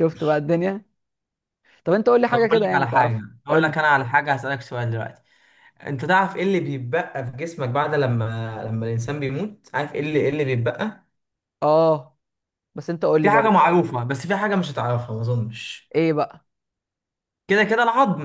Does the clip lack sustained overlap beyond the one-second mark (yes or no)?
no